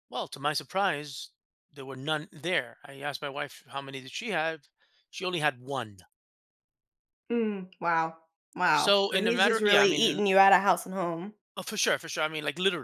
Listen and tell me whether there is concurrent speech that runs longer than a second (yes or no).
yes